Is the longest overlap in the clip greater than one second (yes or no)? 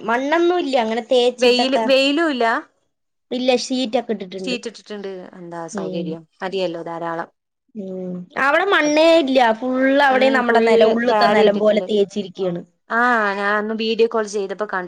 yes